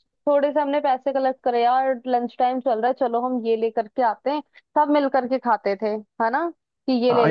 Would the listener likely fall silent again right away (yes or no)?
no